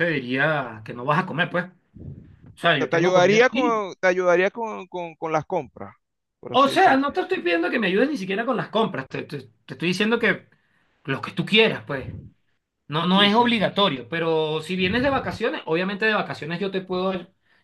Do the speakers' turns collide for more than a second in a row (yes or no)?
yes